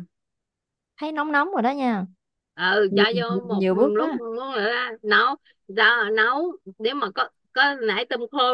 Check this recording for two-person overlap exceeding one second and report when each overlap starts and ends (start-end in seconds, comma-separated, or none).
2.9-4.2